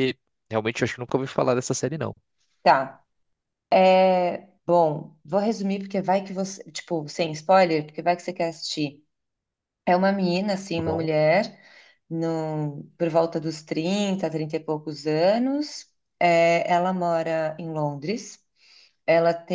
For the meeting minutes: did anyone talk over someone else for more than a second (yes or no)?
no